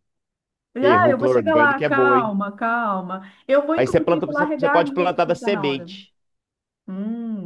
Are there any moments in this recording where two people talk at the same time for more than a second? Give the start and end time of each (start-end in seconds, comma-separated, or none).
0.8-2.3, 3.8-5.9